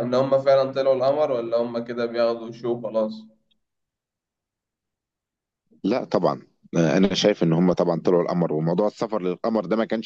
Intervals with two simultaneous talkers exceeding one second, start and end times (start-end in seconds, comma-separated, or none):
none